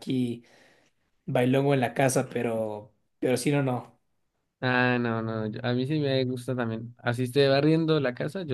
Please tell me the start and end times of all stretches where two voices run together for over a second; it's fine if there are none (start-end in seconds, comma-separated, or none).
none